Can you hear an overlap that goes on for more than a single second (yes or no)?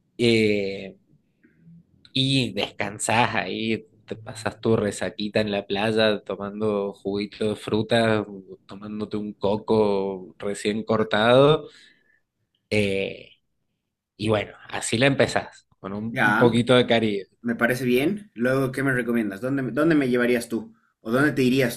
no